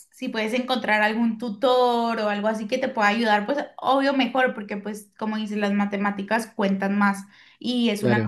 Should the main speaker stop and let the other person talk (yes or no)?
no